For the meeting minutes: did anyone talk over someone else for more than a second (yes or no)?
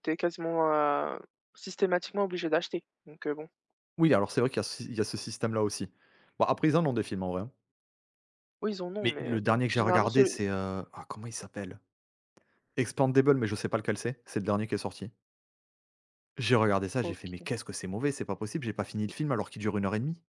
yes